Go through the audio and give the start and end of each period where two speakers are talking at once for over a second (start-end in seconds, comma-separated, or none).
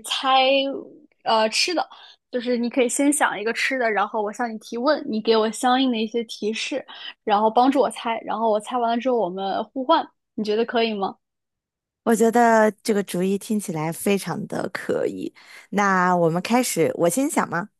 none